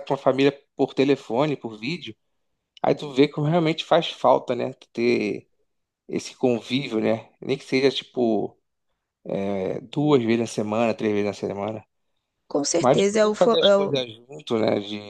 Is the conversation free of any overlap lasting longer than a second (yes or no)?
no